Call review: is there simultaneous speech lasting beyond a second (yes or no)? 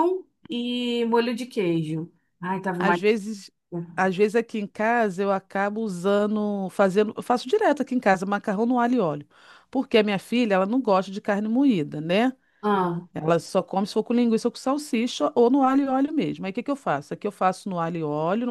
no